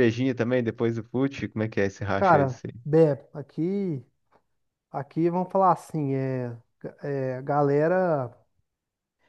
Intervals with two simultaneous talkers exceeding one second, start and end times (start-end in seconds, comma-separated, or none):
none